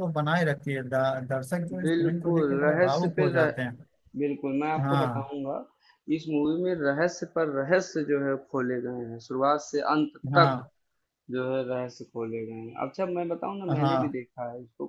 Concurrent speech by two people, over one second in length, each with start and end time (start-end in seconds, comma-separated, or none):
1.8-3.5